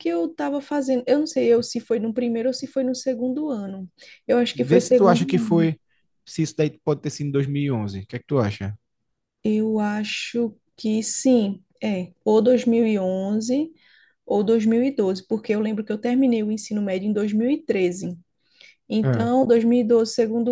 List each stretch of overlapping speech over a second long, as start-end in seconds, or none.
4.5-5.7